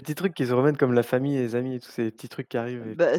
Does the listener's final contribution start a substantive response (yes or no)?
yes